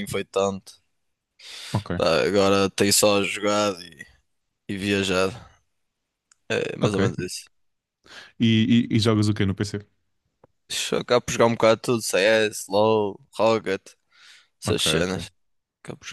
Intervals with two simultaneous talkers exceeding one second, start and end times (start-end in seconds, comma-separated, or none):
none